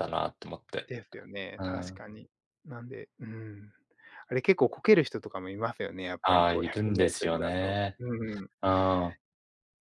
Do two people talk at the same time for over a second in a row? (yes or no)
yes